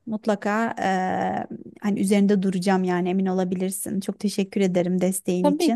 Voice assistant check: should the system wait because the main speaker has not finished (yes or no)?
no